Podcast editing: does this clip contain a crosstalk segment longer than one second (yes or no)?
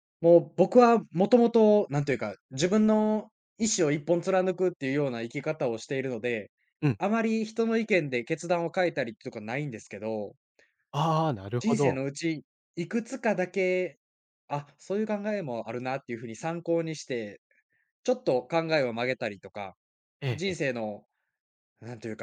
no